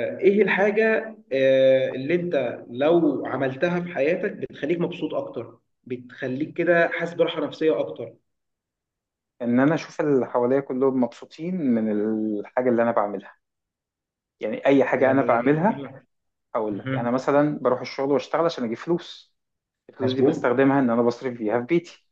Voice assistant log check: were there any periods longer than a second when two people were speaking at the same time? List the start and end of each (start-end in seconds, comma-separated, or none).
none